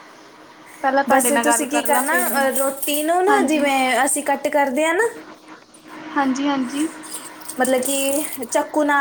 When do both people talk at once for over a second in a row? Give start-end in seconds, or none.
1.1-2.5